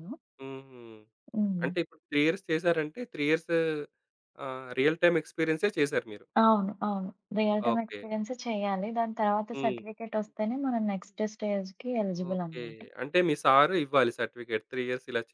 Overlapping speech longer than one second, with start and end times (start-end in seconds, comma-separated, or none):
none